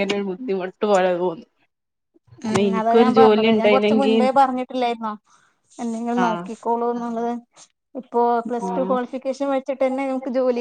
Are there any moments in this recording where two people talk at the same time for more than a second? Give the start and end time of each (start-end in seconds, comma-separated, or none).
2.5-4.2